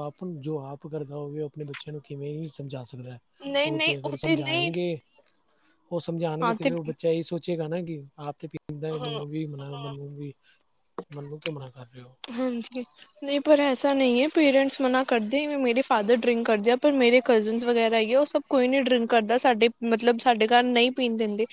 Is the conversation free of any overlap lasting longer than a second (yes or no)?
yes